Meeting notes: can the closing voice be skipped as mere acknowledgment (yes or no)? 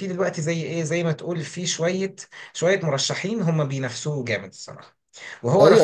no